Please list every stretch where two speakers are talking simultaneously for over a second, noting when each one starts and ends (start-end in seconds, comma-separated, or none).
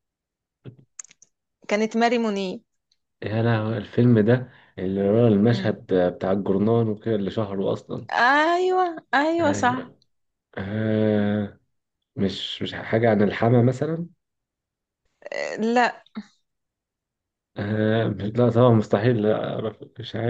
none